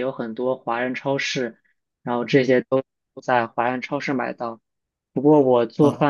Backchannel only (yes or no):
yes